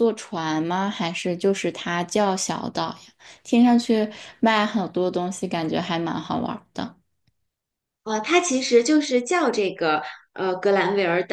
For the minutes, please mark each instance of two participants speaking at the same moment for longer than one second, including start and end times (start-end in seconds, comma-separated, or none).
none